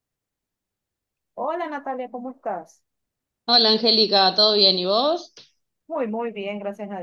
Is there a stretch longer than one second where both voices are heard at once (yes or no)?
no